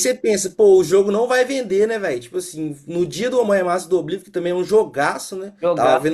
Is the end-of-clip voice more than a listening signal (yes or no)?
no